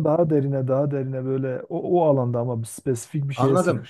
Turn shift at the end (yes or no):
yes